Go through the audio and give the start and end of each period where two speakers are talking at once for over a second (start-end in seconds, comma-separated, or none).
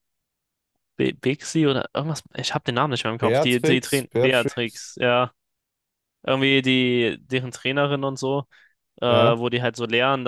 3.2-4.8